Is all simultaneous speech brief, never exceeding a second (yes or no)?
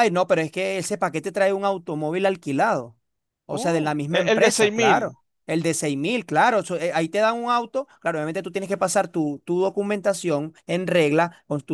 no